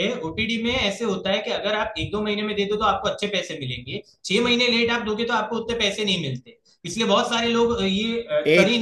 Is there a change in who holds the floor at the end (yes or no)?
yes